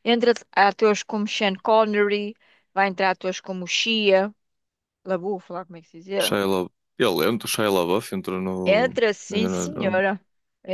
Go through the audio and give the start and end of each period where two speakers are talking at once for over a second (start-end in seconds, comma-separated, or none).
8.6-10.0